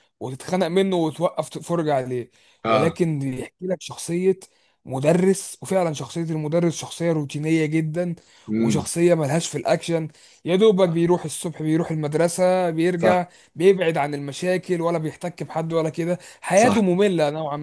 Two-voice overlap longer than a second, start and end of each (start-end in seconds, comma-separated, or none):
none